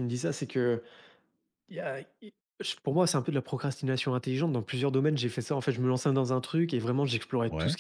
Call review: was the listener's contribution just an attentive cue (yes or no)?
yes